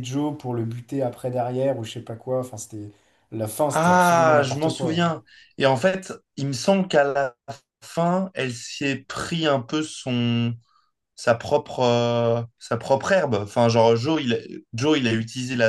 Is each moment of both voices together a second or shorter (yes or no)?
no